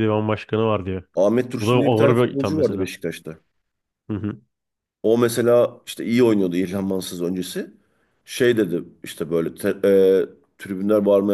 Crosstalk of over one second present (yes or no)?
yes